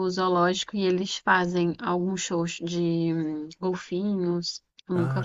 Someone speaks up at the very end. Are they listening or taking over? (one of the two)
taking over